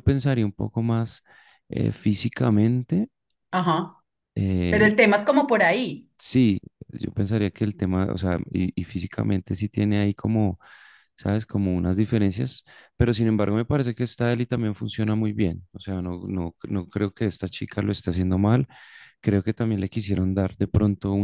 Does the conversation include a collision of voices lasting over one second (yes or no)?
no